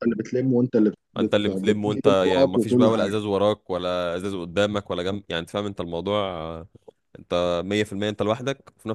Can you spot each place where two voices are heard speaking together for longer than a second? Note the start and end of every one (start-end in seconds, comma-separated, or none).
1.2-3.2